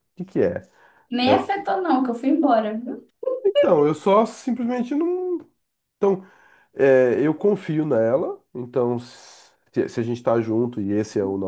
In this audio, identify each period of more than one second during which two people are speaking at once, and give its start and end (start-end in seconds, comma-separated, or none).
none